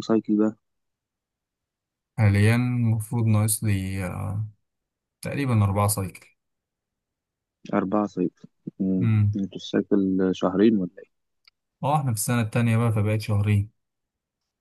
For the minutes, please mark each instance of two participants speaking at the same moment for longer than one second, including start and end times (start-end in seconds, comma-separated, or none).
none